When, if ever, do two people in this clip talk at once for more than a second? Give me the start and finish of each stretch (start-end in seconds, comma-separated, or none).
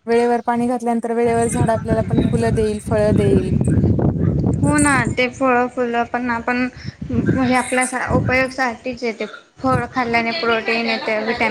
none